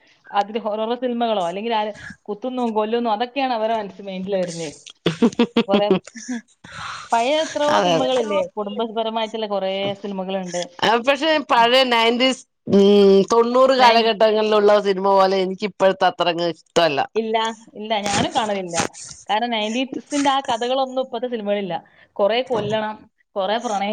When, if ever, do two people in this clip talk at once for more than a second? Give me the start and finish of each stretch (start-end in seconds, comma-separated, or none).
none